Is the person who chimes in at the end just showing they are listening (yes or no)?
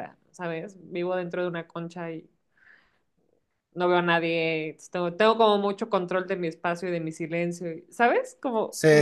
no